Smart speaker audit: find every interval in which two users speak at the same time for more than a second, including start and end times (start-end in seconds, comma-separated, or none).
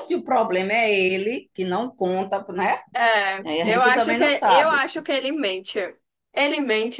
3.4-4.8